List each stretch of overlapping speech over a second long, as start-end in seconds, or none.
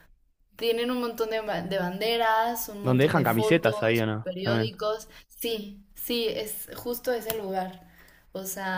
2.8-4.7